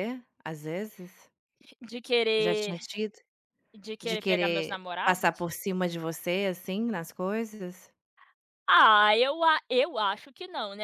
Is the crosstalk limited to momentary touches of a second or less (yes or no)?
no